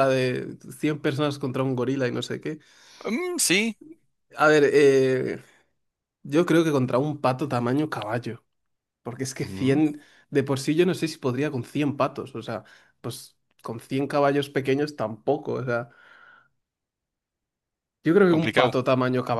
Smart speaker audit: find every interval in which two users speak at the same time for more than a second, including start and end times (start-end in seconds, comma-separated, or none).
none